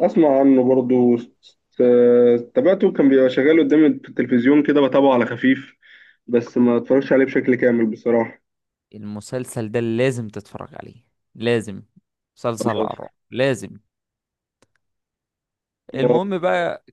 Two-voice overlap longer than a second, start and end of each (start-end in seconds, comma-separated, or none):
none